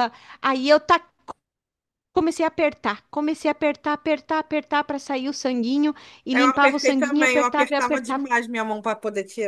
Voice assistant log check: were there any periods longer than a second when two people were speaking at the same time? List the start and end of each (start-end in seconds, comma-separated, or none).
6.3-8.3